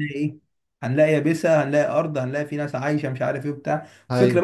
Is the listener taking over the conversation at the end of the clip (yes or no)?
no